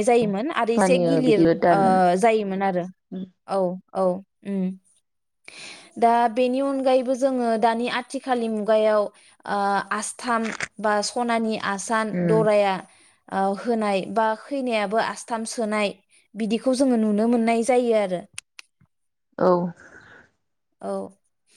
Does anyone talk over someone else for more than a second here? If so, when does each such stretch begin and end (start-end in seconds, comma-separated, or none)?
0.8-2.6